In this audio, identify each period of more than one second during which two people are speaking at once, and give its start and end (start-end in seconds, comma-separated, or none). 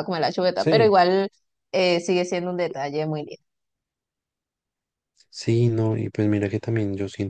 none